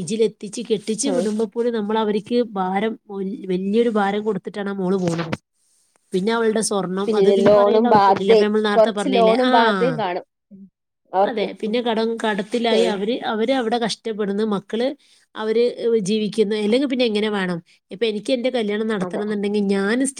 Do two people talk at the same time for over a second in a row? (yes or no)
yes